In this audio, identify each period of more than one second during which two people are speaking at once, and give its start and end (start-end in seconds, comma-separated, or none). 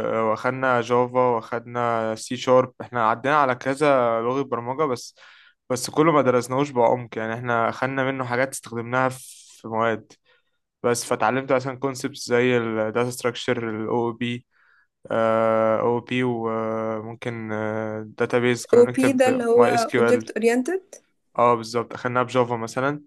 18.7-20.3